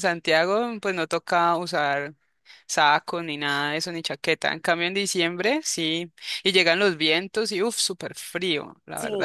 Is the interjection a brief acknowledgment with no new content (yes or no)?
no